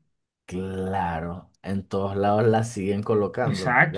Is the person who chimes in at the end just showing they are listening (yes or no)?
no